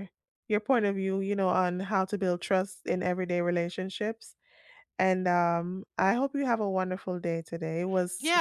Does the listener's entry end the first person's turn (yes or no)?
yes